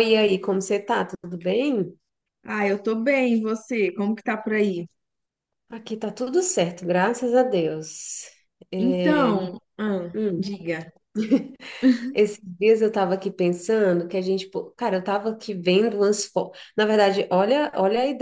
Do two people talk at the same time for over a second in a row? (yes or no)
no